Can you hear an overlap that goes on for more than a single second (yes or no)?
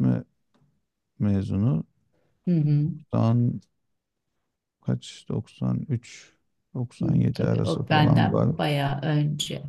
yes